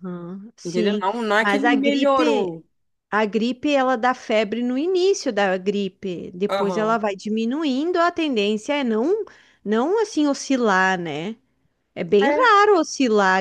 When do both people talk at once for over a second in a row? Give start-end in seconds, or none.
0.6-2.6